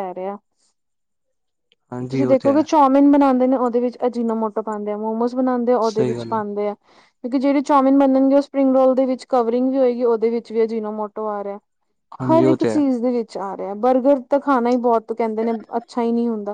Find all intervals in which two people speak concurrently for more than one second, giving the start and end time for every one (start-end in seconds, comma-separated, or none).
none